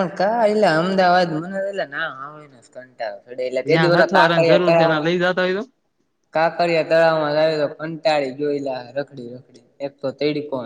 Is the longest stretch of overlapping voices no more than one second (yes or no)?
no